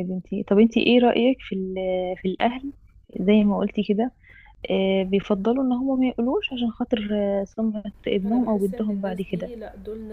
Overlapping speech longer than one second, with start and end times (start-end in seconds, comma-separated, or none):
8.2-9.5